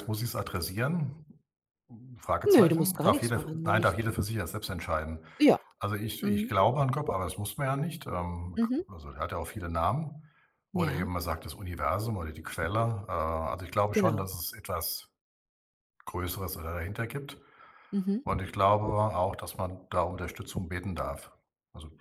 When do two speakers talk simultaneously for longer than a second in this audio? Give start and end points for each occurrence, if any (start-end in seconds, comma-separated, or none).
2.5-3.9